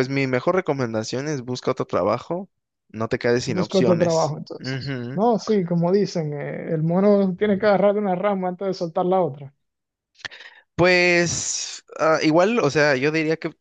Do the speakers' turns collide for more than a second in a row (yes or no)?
yes